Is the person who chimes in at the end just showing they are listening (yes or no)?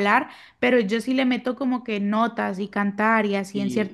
no